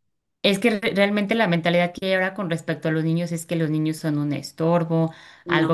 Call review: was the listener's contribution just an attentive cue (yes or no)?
yes